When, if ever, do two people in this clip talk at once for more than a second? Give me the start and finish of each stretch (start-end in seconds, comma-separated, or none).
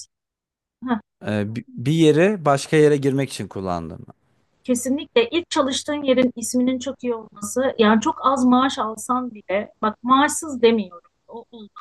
none